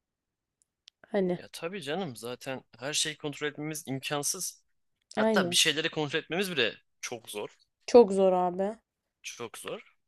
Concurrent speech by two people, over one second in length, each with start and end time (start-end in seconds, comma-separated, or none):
none